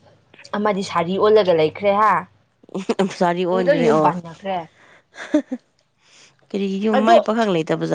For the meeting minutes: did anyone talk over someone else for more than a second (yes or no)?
no